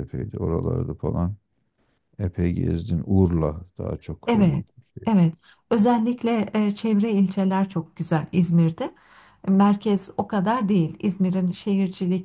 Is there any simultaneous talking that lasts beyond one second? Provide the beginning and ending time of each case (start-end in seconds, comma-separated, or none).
none